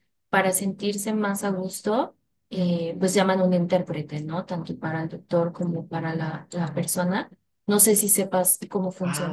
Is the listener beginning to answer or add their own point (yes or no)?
yes